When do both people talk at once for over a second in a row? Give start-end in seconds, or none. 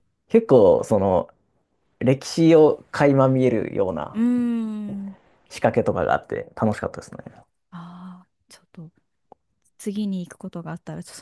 none